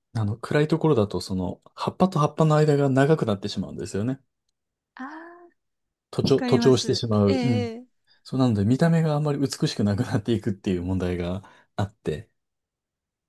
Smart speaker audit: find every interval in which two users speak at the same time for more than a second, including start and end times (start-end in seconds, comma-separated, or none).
6.2-7.7